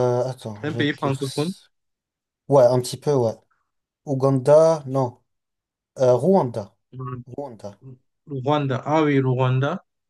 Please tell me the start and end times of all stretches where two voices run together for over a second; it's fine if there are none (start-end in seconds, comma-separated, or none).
none